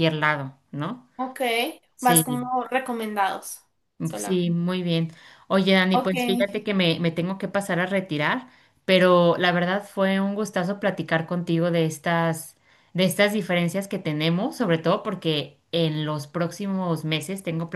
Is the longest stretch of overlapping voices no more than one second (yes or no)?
yes